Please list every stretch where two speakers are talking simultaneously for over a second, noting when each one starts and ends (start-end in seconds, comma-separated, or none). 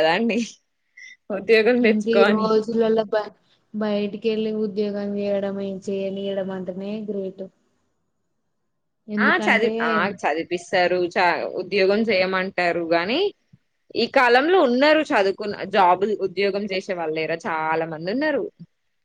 none